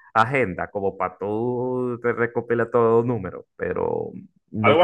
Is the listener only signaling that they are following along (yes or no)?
yes